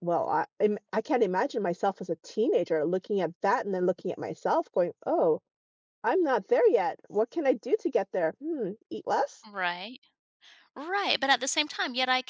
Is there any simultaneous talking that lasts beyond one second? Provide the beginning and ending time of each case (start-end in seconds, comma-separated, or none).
none